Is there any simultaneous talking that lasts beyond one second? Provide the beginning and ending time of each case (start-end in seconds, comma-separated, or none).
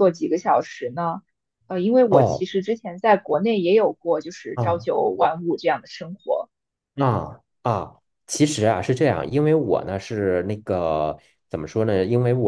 none